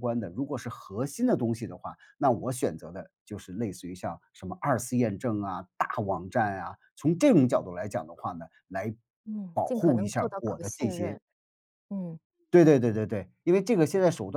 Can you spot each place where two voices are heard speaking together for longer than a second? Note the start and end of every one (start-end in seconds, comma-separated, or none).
9.5-11.2